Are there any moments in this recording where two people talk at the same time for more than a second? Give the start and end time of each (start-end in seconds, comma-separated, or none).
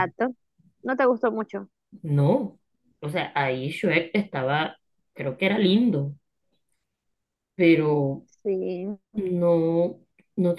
none